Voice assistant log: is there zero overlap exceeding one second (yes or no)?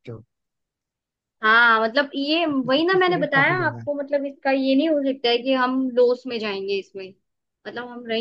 no